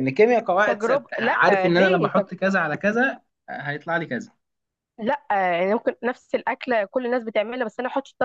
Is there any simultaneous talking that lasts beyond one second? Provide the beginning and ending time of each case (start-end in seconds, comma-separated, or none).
0.7-2.3